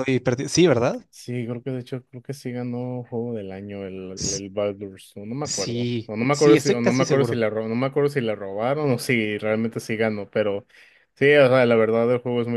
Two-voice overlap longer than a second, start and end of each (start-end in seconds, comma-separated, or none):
5.4-7.4